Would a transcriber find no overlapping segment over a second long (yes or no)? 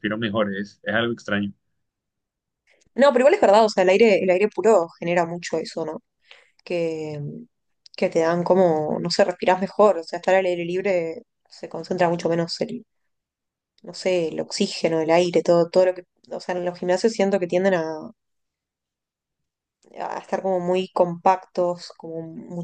yes